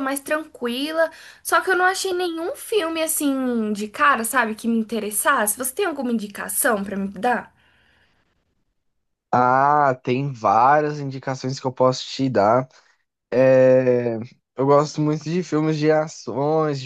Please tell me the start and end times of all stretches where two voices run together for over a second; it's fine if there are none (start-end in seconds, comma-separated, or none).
none